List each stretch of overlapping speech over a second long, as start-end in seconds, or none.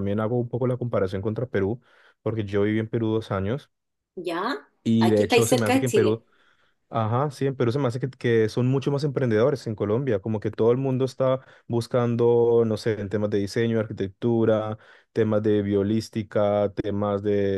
4.8-6.2